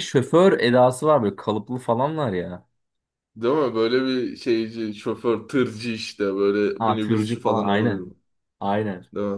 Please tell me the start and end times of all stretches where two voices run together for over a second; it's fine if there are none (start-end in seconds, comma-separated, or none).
6.8-8.1